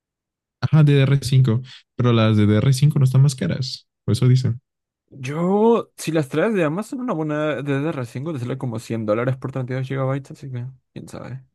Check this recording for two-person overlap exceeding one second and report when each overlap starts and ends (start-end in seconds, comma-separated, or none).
none